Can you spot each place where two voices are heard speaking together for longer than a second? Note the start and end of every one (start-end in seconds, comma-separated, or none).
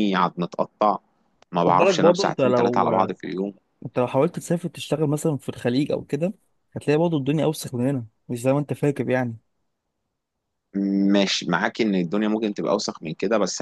1.7-2.9